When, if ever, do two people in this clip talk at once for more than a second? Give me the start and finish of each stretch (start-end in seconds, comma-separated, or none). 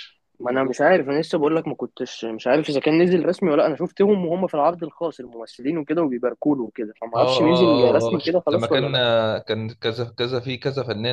7.2-8.9